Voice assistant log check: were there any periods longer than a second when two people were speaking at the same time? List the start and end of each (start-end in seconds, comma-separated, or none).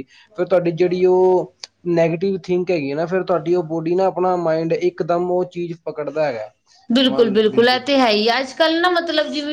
none